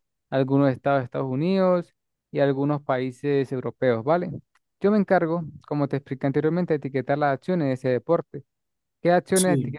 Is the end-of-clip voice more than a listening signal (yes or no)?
no